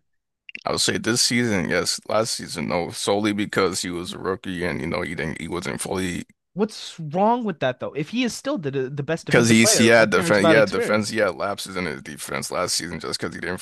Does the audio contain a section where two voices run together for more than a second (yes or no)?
yes